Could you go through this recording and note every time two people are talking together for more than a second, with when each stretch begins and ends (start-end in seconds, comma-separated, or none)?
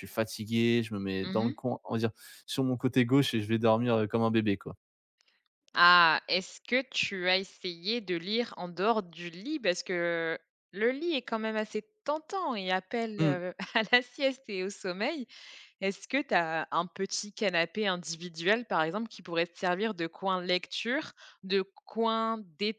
none